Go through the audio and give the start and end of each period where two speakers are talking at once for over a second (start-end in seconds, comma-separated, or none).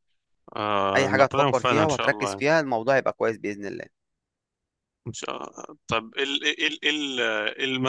1.0-2.4